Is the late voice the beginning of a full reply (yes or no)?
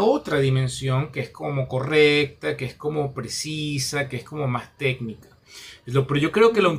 no